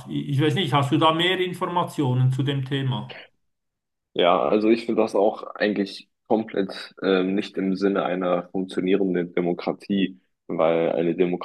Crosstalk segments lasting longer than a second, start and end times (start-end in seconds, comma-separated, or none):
none